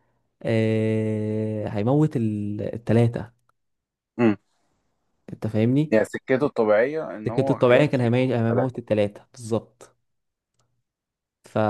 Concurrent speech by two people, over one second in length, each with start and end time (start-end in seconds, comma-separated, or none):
7.3-8.7